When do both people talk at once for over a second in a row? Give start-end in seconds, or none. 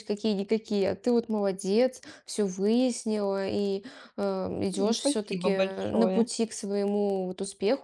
4.8-6.3